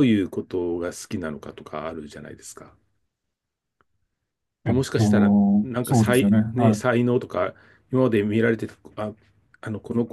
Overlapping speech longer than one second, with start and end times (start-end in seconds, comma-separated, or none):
4.7-6.8